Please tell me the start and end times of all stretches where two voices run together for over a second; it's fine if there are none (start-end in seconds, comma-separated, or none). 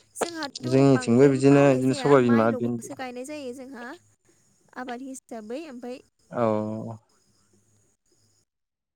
0.7-2.9